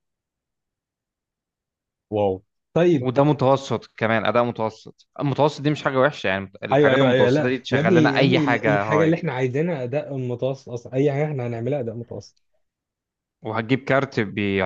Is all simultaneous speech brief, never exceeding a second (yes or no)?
no